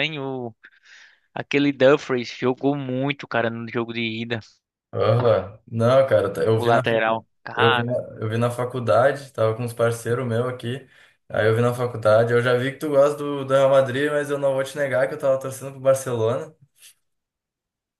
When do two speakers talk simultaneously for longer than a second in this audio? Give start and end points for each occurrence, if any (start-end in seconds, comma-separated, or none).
6.6-8.0